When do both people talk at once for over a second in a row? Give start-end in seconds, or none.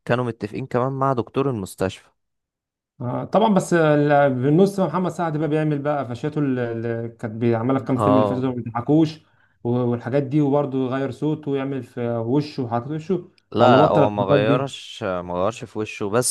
13.5-14.8